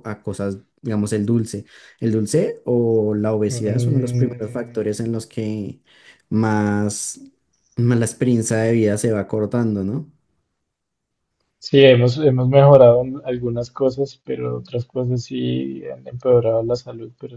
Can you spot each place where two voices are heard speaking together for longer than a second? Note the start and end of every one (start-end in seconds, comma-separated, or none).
3.5-4.8